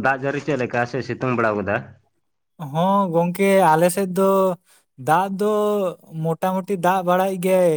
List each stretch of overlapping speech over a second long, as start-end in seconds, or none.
none